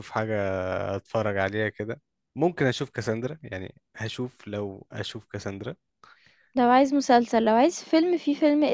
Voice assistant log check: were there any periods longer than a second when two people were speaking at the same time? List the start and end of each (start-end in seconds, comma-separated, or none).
none